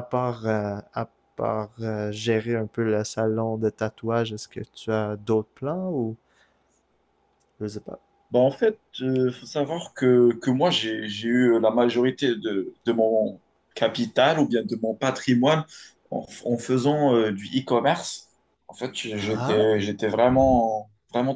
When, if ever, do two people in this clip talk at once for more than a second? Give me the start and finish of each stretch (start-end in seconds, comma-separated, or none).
none